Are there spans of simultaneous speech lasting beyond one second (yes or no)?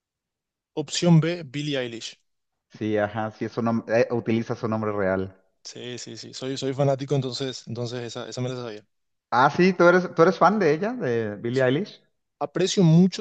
no